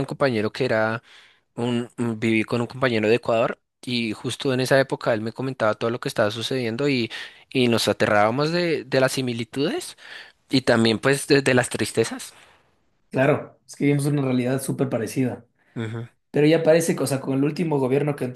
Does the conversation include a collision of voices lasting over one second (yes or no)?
no